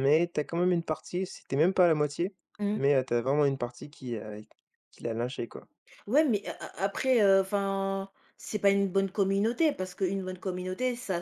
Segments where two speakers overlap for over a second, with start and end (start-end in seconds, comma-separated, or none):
none